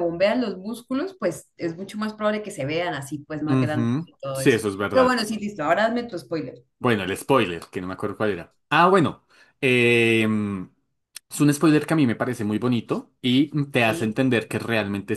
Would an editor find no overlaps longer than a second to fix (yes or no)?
no